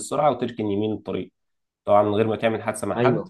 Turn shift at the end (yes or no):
no